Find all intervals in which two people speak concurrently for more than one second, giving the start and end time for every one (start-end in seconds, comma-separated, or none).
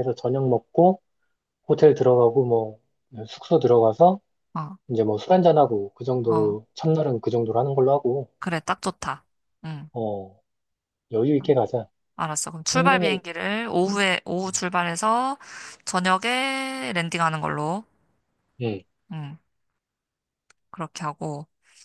none